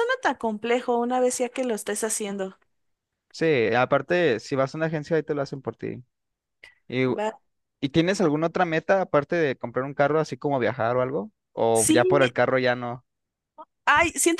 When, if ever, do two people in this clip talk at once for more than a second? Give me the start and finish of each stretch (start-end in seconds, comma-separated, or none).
none